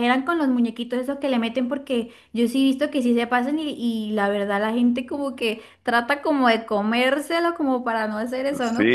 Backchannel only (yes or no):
no